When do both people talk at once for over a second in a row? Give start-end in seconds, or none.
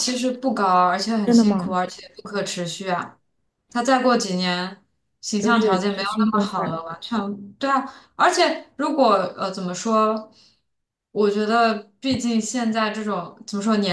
5.4-6.8